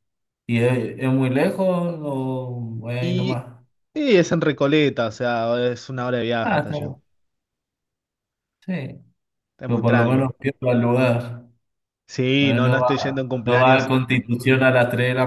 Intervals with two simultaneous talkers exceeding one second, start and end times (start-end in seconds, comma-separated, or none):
12.4-13.9